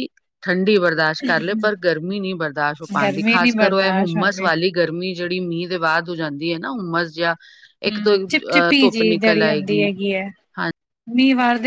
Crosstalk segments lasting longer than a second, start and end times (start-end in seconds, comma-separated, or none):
3.0-4.5